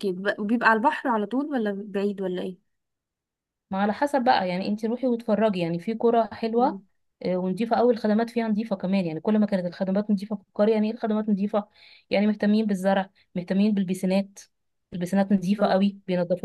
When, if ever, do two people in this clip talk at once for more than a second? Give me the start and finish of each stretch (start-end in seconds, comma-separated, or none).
none